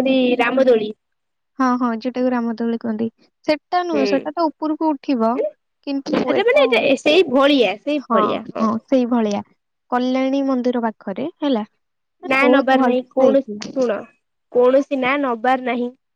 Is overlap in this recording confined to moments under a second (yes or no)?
no